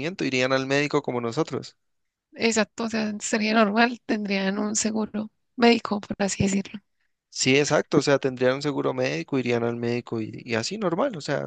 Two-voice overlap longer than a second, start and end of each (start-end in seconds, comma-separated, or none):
none